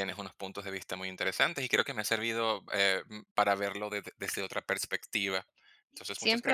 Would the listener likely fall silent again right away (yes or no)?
no